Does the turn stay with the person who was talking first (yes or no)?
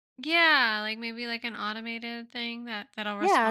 no